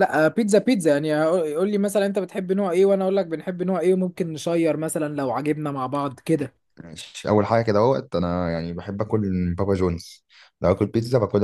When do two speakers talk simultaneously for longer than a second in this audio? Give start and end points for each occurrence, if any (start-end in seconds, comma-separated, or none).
none